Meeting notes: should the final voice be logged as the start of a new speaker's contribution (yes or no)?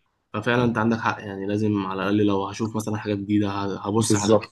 no